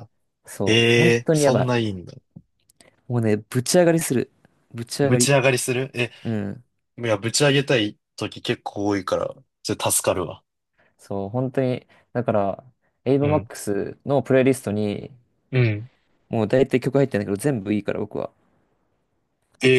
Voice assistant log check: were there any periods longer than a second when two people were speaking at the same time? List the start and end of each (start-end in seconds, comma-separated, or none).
0.7-1.9